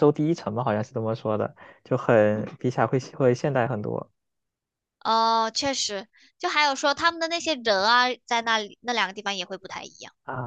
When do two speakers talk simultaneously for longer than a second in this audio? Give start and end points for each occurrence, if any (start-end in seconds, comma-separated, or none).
none